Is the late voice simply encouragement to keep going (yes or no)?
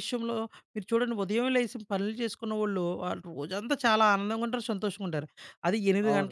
yes